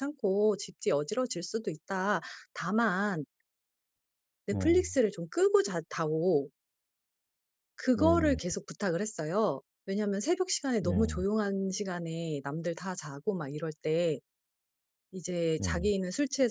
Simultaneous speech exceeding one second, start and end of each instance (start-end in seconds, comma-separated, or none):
none